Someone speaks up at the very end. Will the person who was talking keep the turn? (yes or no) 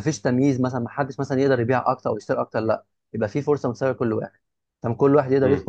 no